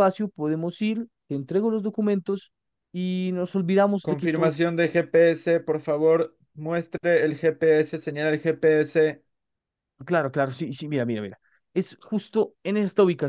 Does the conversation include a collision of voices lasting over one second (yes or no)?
no